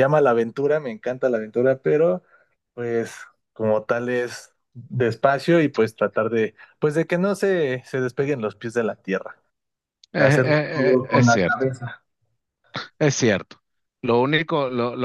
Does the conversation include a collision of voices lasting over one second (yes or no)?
yes